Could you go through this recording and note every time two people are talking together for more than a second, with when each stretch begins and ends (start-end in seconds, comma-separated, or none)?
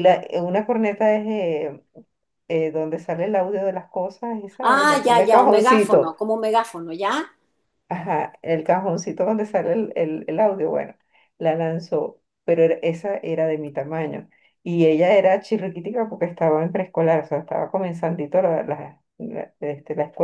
4.7-6.2